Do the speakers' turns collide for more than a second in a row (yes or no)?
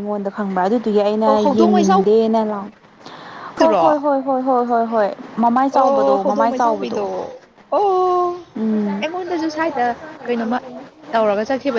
yes